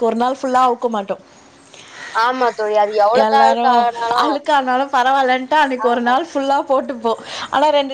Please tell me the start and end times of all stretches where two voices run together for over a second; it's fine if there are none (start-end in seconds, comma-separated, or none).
none